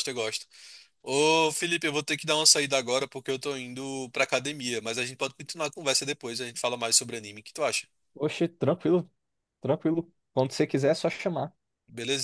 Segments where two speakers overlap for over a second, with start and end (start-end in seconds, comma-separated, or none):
none